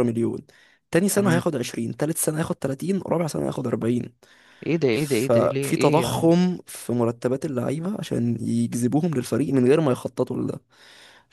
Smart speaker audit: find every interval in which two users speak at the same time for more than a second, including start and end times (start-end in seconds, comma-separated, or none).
4.9-6.3